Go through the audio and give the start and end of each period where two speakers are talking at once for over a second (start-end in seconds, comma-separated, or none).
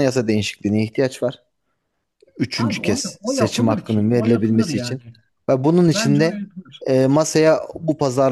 2.5-5.0